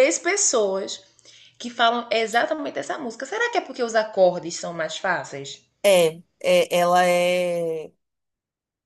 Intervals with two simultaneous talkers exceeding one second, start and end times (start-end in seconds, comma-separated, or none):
none